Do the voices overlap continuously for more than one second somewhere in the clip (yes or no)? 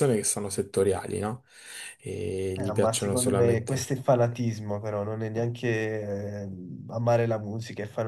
yes